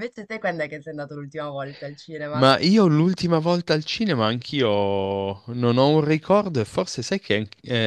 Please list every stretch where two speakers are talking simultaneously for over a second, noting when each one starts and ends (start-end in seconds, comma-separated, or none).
none